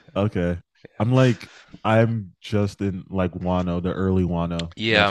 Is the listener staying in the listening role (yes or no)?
no